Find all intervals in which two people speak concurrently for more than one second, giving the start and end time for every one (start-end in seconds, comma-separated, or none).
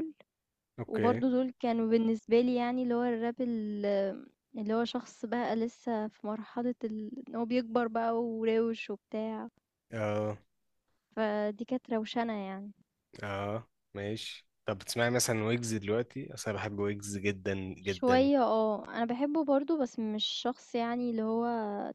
none